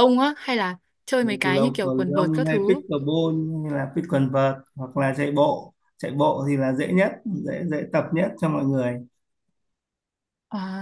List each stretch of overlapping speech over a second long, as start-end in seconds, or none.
1.4-2.8